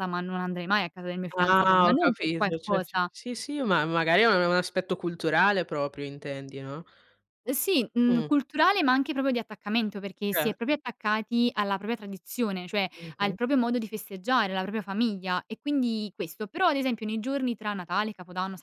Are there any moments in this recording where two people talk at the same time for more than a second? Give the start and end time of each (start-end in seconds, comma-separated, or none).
1.3-3.1